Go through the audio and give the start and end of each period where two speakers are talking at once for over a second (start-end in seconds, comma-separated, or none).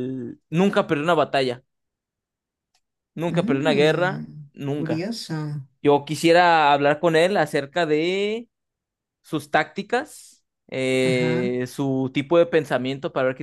3.3-5.1